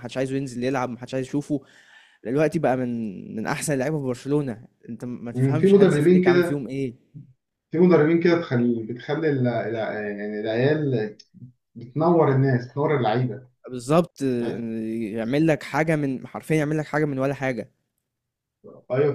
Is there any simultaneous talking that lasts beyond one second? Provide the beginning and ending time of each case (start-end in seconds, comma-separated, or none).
5.3-6.6